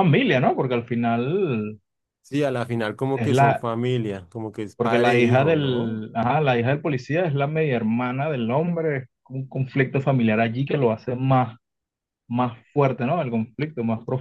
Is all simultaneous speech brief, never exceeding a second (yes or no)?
no